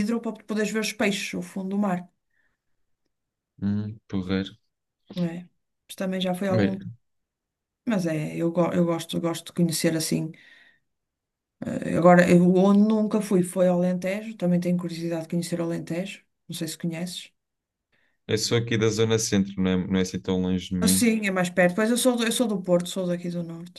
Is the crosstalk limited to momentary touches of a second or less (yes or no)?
yes